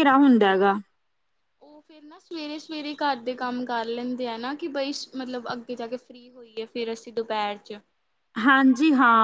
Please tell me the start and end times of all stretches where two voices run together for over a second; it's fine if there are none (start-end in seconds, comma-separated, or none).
none